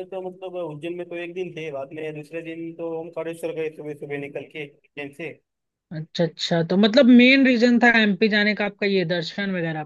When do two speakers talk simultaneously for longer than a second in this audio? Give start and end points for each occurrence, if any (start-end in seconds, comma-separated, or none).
none